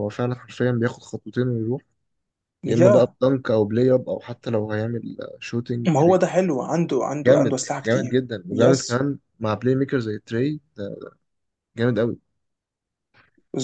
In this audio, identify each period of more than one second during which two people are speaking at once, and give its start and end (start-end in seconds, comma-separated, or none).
7.2-9.1